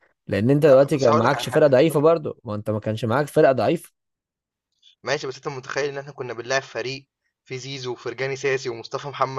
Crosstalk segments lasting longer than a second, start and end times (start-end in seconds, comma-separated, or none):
0.7-2.1